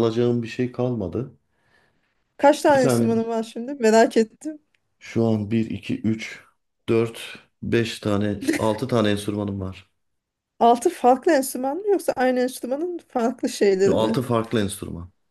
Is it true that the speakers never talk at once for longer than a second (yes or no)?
yes